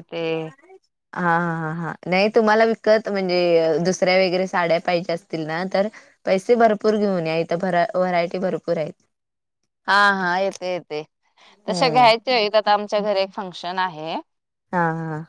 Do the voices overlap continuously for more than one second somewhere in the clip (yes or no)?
no